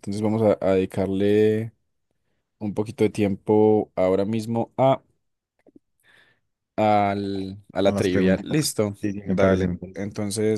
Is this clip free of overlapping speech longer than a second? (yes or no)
no